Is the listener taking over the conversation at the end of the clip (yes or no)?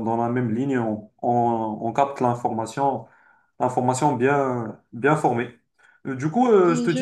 no